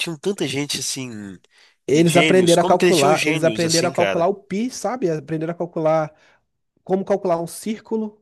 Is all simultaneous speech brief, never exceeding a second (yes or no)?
no